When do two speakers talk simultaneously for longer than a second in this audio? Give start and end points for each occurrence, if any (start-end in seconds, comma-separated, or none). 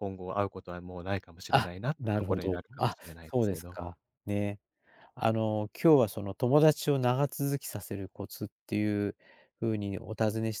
1.5-3.8